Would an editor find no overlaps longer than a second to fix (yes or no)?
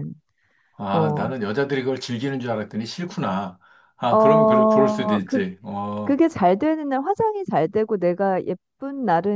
no